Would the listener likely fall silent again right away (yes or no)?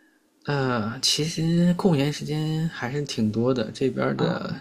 yes